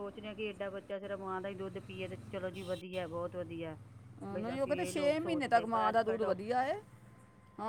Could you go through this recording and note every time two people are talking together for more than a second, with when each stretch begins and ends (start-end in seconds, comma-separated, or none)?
4.3-6.4